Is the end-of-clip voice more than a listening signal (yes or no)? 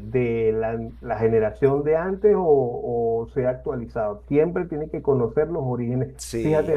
no